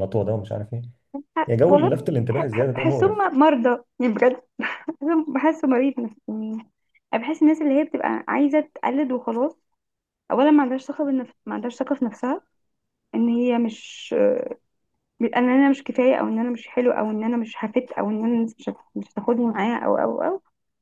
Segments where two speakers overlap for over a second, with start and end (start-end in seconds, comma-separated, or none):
1.5-3.2